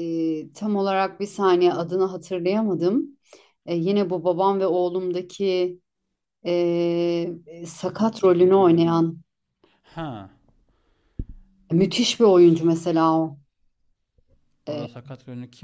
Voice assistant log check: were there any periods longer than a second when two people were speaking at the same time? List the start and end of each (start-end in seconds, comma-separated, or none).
7.8-9.0